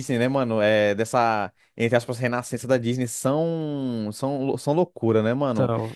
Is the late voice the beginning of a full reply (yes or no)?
no